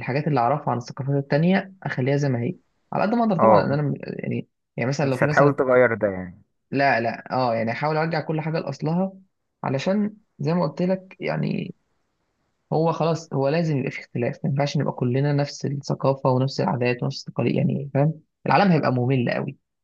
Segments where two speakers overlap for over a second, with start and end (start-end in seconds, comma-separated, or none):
none